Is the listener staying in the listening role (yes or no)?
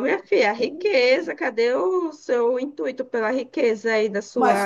no